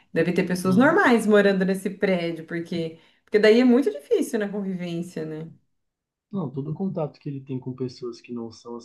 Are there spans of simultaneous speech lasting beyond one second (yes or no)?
no